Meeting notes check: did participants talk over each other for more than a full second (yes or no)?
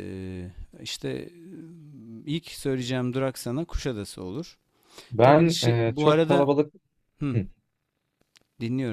yes